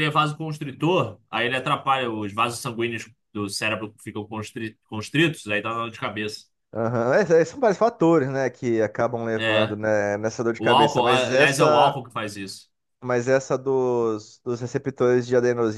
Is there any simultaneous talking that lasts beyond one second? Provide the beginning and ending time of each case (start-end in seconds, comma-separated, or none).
10.6-12.0